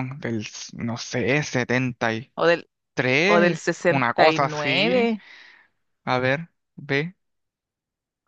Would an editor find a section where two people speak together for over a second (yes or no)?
yes